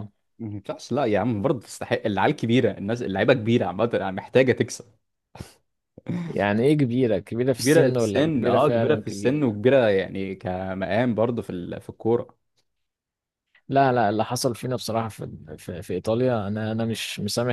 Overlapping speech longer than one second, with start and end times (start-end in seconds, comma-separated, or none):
7.5-9.4